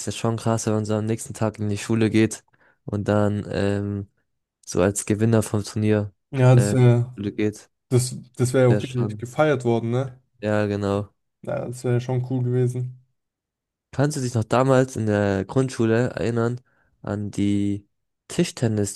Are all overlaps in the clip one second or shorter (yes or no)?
yes